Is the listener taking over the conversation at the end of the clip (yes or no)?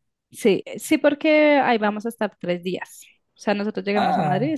no